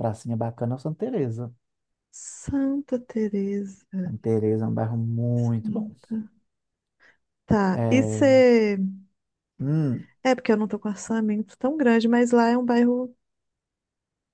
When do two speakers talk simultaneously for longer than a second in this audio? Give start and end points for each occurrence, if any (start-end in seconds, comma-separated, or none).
none